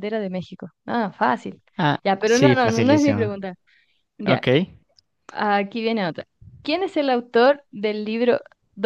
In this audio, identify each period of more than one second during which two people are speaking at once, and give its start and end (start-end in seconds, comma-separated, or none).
2.0-3.3